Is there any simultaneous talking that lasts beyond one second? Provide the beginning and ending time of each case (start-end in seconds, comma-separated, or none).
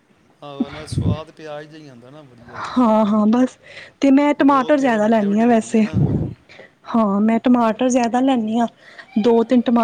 4.4-5.8